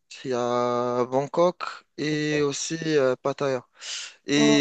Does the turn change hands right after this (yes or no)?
no